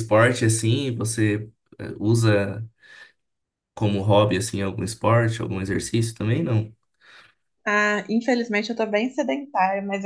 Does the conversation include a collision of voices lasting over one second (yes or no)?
no